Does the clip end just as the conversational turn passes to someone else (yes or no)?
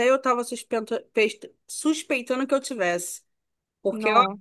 no